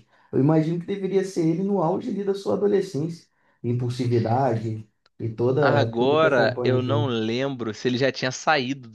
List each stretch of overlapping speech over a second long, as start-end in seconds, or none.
5.6-7.1